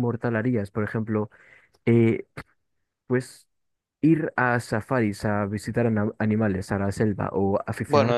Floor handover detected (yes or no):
yes